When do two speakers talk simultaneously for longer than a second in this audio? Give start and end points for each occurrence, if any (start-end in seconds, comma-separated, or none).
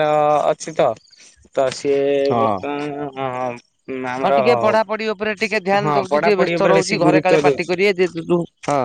5.8-7.7